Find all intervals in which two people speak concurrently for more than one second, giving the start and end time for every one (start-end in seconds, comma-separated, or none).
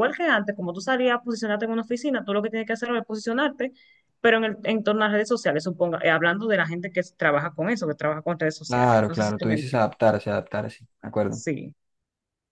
8.7-9.9